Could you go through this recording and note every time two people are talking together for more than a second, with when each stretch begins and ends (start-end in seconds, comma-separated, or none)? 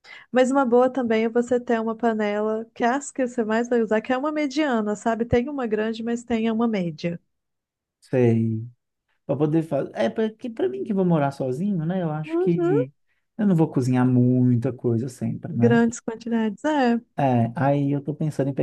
none